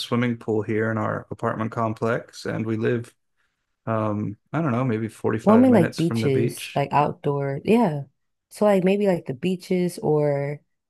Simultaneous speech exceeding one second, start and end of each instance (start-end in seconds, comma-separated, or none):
5.4-6.8